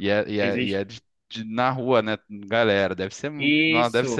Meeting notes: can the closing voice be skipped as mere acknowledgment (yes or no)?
no